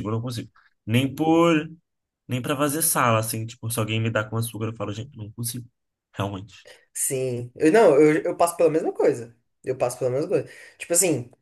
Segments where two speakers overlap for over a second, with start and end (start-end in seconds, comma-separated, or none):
none